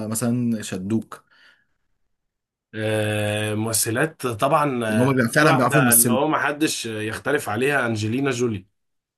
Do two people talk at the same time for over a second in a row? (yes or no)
yes